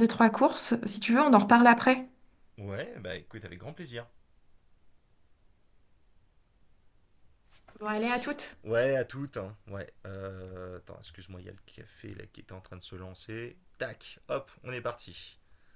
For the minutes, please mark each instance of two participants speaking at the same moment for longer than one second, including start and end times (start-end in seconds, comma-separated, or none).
none